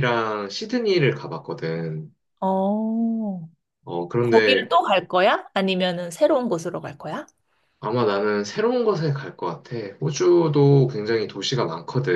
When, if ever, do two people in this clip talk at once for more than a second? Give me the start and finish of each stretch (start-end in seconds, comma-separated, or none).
none